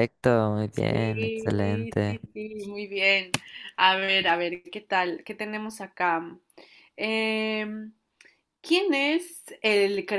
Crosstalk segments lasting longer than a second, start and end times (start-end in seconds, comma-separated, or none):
0.7-2.2